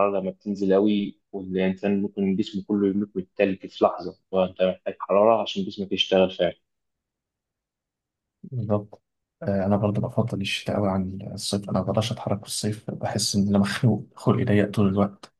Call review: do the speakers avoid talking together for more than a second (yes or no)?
yes